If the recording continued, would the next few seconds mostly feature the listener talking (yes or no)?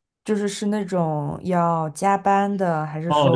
yes